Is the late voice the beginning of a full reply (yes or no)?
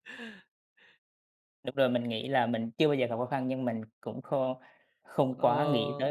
yes